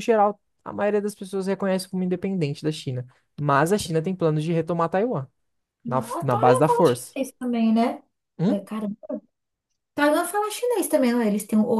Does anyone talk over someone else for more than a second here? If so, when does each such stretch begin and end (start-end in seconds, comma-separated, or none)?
5.9-7.2